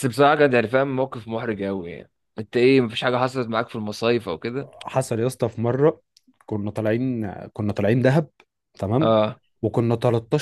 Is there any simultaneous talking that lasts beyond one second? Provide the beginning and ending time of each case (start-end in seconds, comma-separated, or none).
none